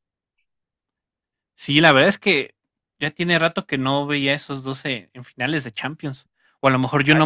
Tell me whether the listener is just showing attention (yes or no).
yes